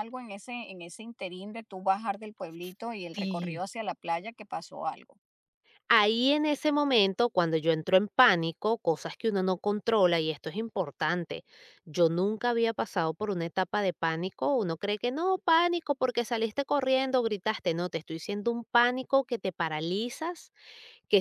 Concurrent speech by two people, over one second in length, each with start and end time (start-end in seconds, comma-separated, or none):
none